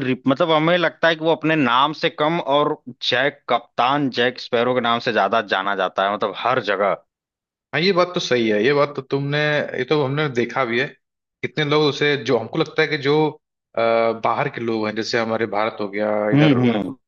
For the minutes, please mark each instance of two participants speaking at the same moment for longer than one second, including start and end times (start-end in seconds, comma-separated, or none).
none